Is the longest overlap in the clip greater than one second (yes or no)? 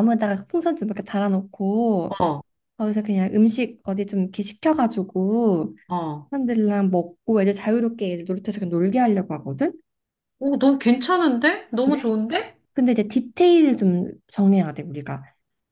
no